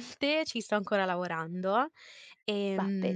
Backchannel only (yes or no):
yes